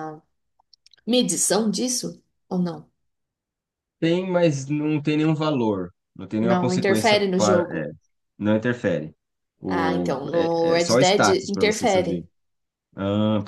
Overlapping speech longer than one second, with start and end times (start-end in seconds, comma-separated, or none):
6.4-7.9, 9.7-12.2